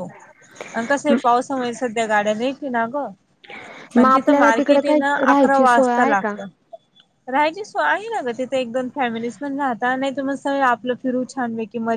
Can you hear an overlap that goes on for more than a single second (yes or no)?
yes